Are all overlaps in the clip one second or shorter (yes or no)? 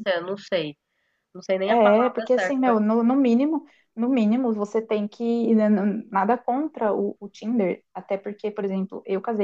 no